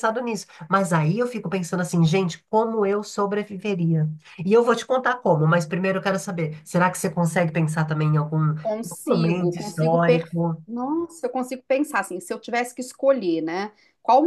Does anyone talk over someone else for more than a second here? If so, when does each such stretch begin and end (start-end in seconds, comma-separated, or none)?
9.1-10.3